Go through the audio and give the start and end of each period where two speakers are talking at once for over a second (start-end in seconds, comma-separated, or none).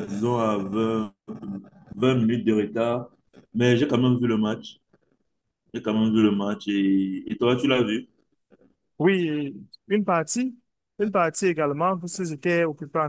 none